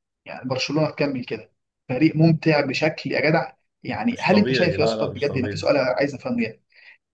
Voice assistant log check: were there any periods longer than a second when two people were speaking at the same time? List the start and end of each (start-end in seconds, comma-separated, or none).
4.1-5.7